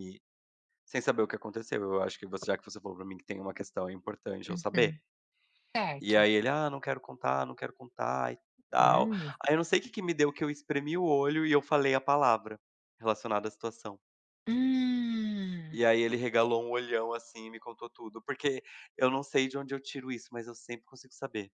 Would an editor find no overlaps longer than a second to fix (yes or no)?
yes